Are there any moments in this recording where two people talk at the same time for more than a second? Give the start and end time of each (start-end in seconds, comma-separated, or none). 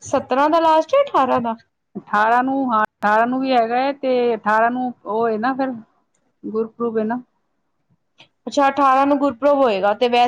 none